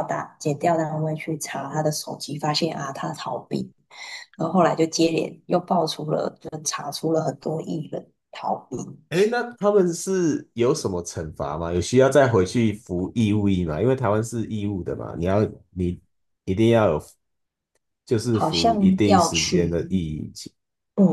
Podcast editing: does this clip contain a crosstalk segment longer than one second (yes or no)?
yes